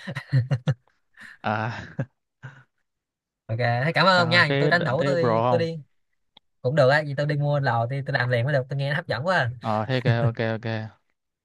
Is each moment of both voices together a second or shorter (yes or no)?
no